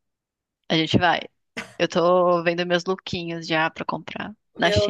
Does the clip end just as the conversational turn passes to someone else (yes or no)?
yes